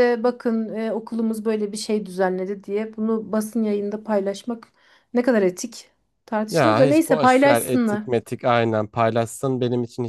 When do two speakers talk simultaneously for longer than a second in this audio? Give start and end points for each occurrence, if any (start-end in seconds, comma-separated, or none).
6.5-8.0